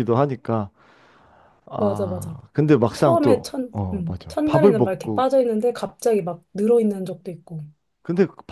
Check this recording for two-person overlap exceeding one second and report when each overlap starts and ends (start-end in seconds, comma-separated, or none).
3.0-5.2